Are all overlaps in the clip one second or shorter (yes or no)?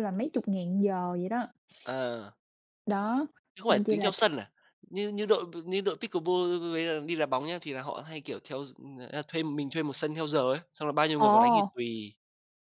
yes